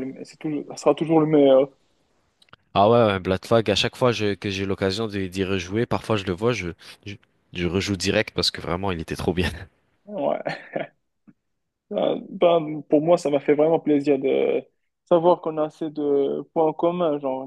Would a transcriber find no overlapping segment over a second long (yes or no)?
yes